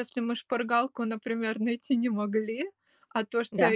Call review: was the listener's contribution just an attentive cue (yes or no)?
yes